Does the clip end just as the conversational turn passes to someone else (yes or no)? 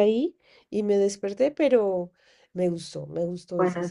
yes